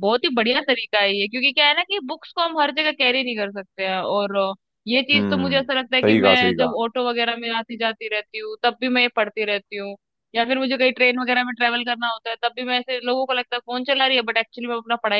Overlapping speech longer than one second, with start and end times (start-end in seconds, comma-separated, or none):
5.1-6.7